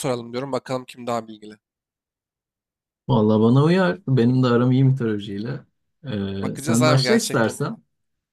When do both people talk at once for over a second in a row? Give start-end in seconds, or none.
6.4-7.8